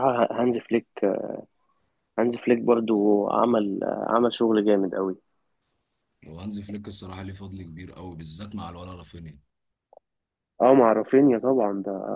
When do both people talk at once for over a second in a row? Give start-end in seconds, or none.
none